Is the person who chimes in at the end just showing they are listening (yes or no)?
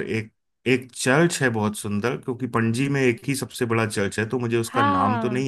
no